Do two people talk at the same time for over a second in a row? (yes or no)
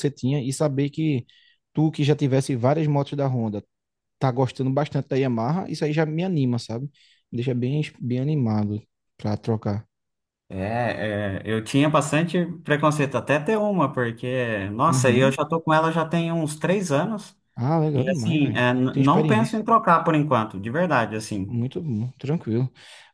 yes